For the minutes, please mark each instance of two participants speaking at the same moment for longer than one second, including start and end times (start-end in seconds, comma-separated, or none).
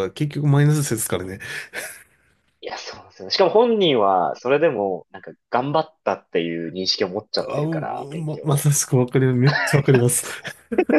7.4-8.7